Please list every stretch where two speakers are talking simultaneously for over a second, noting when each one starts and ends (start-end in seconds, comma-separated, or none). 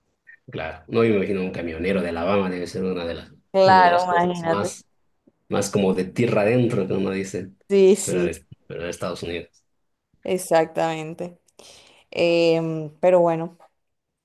3.5-4.7